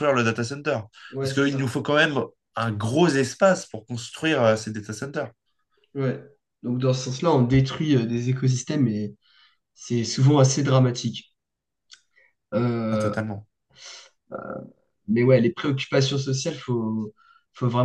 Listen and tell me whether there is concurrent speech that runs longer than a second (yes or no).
no